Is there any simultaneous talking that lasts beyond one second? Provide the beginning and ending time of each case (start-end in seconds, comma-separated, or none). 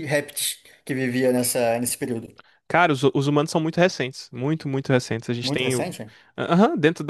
none